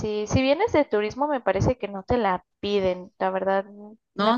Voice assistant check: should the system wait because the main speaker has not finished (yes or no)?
no